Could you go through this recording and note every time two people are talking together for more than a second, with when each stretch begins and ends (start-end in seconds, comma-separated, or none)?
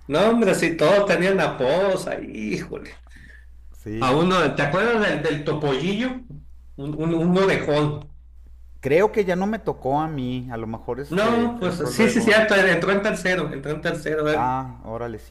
11.1-12.4